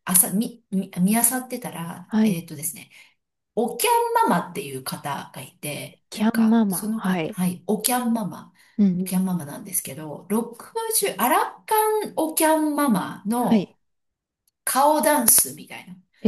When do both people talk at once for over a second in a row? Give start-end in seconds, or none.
6.1-7.4